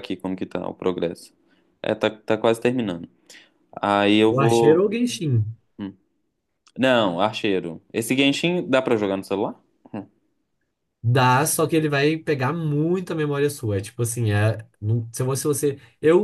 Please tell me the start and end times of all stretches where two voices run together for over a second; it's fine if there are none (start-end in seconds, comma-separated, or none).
none